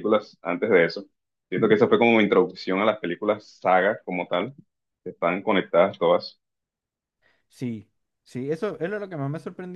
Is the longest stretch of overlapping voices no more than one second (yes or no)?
yes